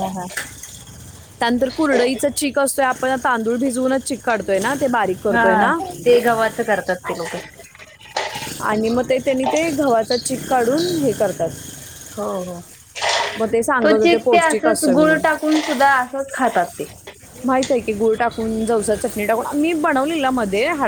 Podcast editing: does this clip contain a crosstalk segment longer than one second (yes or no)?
yes